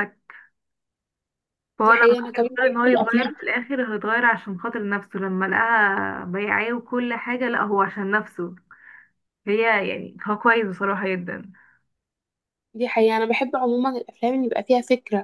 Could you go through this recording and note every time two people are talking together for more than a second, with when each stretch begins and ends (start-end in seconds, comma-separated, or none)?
1.8-3.3